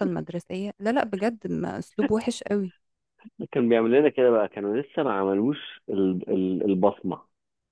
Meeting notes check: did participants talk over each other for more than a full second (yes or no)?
no